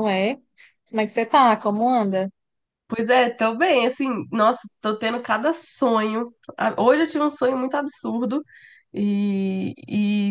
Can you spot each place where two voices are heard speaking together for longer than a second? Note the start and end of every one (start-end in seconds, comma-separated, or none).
none